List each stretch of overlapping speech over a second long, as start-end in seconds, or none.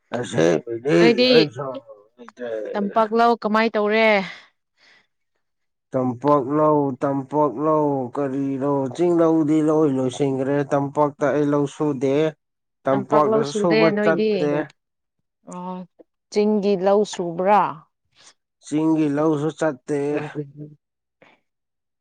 12.9-14.5